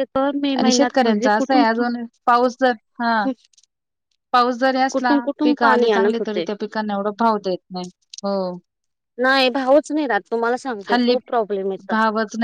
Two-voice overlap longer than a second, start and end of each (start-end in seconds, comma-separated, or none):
4.9-6.4